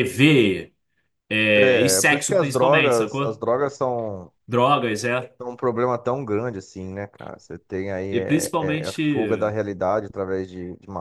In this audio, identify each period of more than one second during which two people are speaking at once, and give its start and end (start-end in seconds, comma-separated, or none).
1.6-3.5, 8.1-9.6